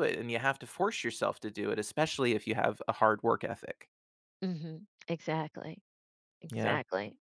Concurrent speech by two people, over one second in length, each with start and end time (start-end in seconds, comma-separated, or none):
none